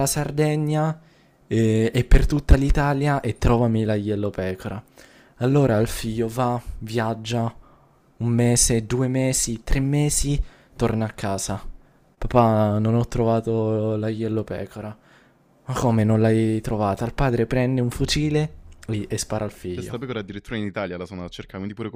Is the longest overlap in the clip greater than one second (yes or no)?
no